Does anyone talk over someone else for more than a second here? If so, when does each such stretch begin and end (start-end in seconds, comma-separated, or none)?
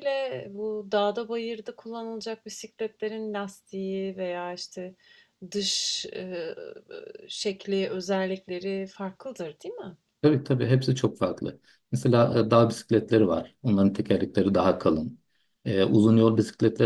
none